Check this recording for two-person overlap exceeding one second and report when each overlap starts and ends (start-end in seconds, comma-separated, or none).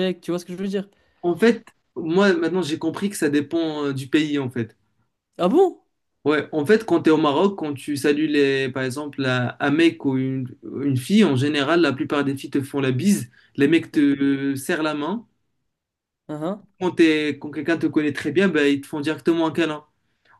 none